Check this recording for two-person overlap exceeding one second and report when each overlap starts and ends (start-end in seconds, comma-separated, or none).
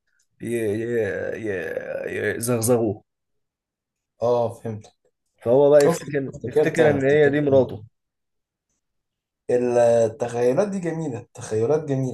5.8-7.7